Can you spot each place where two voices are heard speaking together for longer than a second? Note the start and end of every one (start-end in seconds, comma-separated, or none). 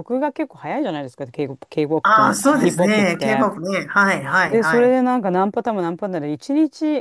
2.0-3.5